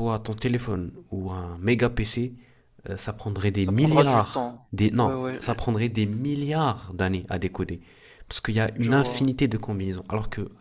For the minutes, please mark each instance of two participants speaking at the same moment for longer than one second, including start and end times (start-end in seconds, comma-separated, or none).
3.6-5.4